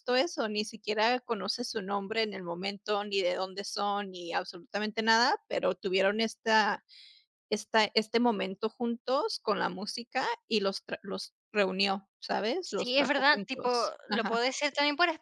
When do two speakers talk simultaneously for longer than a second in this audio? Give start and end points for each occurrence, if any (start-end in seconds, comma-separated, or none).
12.7-14.4